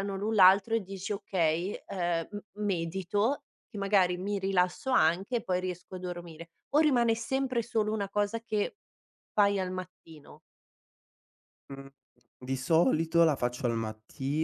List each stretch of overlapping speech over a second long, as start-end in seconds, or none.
none